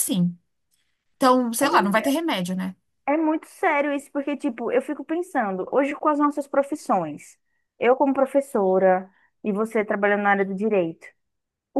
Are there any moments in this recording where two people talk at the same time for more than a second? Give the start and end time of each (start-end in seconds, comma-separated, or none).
none